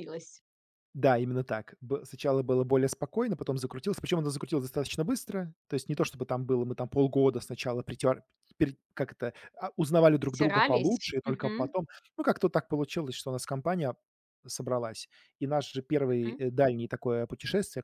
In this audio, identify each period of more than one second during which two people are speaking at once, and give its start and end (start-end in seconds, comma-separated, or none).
10.2-11.8